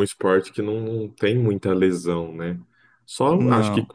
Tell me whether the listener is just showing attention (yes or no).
yes